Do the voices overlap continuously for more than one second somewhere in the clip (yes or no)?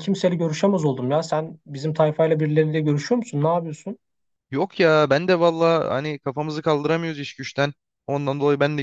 no